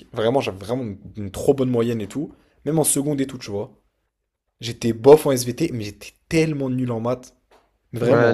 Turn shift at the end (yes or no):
yes